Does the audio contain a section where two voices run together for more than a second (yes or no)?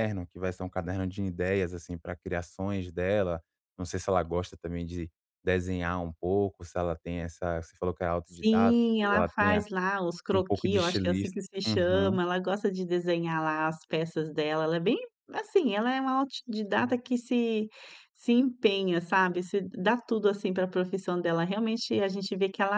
yes